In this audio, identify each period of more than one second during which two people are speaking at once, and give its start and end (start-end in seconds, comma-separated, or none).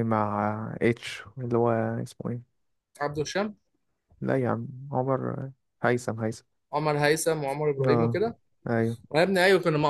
none